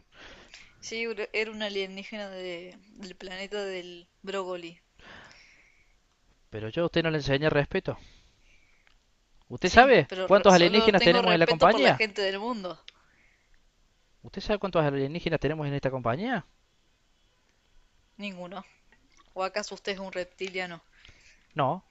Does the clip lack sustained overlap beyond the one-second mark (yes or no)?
no